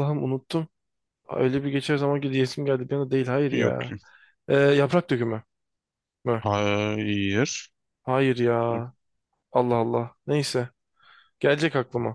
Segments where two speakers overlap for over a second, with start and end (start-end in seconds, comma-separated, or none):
none